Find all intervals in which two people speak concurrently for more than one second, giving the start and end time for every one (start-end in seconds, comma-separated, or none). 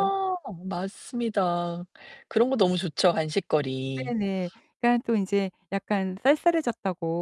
none